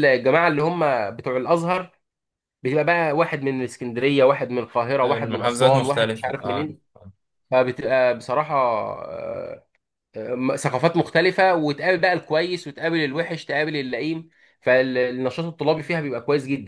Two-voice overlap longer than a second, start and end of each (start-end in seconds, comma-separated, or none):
5.0-6.6